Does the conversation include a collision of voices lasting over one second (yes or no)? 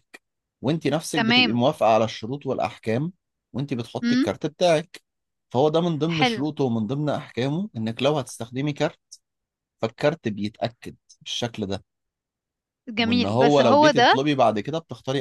yes